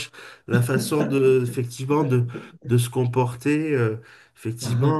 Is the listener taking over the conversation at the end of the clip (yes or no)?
no